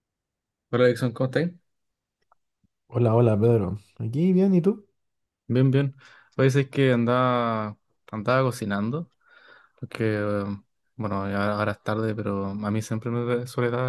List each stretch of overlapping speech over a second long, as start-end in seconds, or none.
none